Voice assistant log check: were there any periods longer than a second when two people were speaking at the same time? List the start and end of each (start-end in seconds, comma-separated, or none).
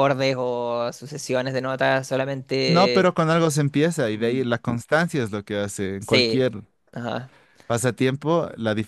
none